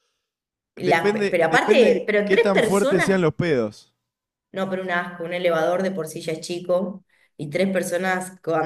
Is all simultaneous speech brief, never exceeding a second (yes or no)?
no